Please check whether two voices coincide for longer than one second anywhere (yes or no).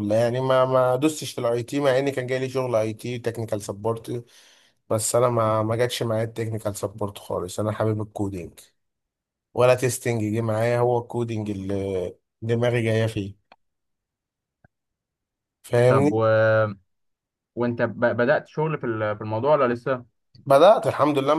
no